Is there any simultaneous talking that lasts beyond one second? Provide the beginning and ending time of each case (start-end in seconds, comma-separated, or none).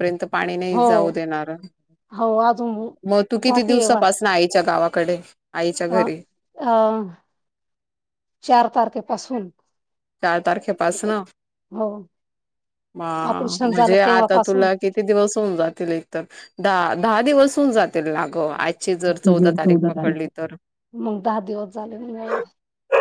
13.3-14.7